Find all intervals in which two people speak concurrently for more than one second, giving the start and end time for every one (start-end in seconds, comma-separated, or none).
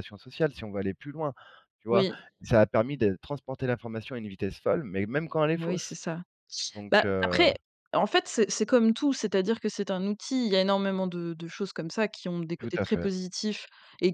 none